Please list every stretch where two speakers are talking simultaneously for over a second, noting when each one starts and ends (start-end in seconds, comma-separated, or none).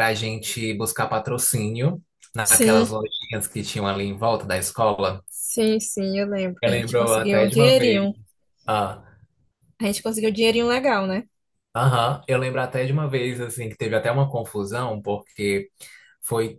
6.6-8.1